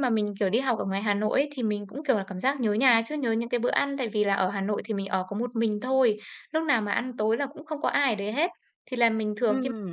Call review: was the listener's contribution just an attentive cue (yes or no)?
yes